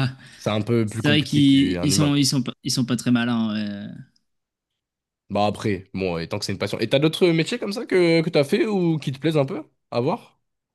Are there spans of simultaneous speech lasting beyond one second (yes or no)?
yes